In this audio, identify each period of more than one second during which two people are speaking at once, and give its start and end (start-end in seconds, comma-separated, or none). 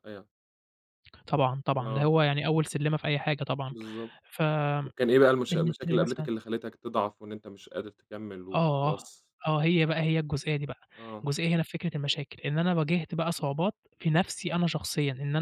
none